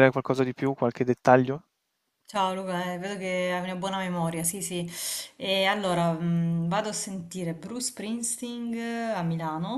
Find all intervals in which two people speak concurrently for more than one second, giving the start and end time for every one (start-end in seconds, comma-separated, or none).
none